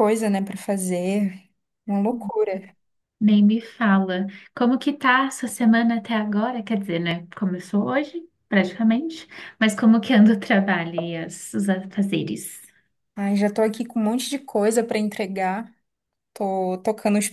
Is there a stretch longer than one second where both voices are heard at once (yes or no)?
no